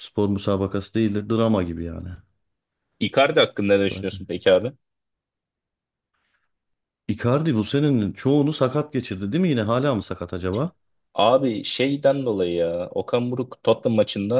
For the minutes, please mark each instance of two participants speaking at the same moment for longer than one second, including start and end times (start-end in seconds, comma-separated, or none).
none